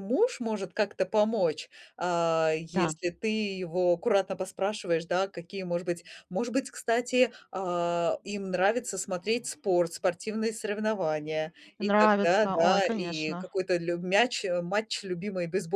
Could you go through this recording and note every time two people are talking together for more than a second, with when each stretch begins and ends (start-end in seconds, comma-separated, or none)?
11.8-13.5